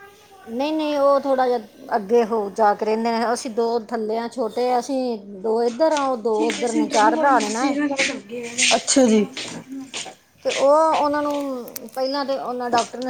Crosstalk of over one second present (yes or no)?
yes